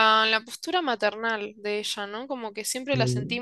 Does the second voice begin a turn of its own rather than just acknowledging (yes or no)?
no